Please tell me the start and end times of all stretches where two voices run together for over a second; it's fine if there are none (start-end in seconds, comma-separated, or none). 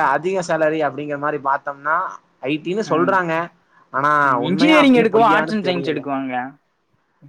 4.5-6.0